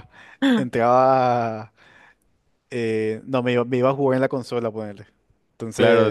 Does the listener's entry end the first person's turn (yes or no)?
yes